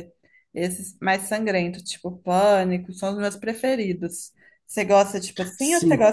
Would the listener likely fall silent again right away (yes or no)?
yes